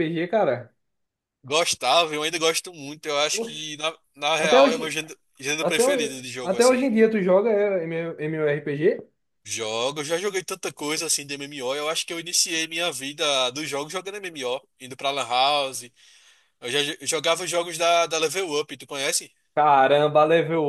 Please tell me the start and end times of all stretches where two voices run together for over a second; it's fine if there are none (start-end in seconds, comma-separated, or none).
5.6-6.8